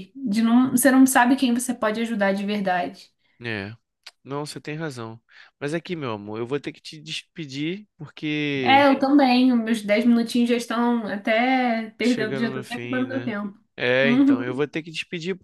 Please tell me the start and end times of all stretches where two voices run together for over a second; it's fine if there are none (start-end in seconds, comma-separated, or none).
12.0-13.3